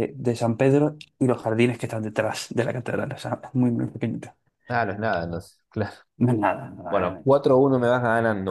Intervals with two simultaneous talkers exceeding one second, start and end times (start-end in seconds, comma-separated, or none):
none